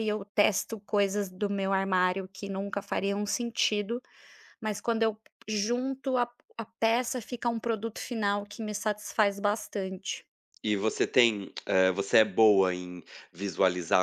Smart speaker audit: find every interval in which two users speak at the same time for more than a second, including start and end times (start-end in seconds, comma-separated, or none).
none